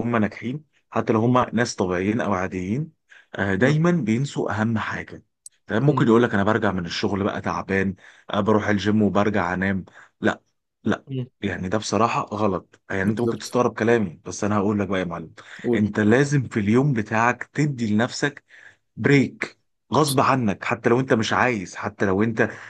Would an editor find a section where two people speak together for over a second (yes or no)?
no